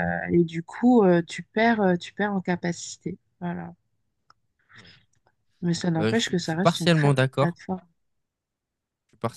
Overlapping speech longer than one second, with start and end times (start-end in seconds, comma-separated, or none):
6.0-7.6